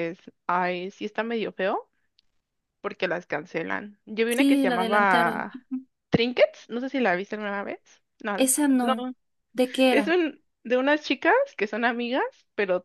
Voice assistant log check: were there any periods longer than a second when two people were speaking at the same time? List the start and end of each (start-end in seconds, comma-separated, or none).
4.3-5.5